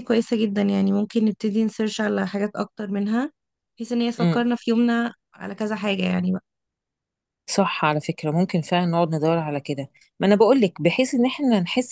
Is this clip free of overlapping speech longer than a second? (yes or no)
yes